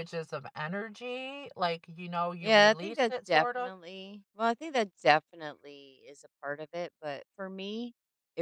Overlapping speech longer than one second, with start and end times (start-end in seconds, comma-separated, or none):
2.4-3.7